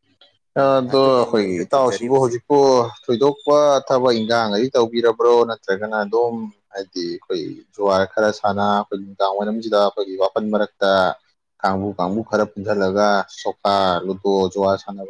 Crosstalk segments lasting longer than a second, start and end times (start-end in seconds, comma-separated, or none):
0.6-2.3